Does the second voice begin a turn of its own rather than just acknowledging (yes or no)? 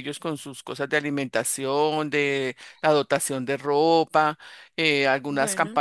no